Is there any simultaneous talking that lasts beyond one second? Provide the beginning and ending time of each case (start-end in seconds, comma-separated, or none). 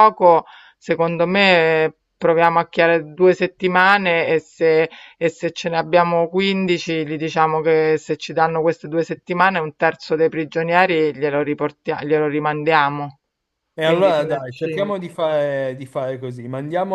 13.8-15.1